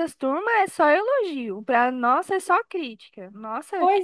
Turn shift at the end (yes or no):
yes